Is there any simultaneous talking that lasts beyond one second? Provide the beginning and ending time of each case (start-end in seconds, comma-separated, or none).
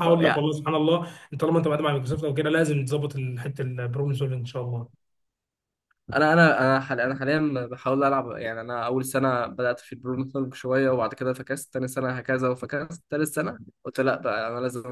none